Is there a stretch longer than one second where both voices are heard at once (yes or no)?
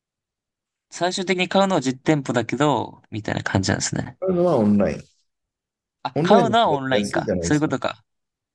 yes